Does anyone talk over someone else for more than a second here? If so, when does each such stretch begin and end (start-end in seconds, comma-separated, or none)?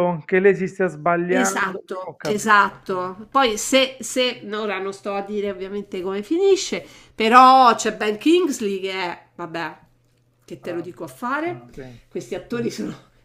1.3-2.6